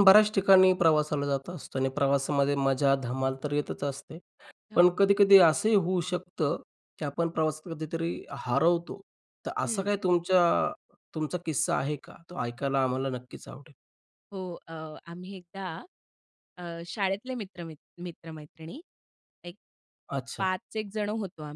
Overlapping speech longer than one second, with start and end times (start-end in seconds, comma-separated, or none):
none